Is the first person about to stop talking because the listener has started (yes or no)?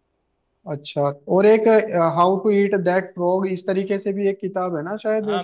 yes